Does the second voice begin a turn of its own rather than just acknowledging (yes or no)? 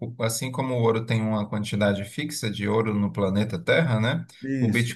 no